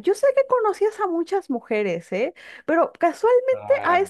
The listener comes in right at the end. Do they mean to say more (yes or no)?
no